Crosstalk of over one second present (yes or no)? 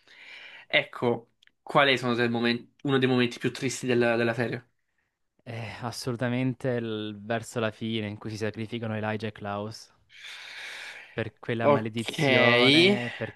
no